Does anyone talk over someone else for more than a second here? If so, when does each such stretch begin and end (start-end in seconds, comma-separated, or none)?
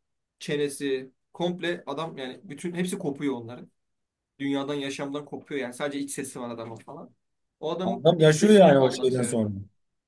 7.8-9.4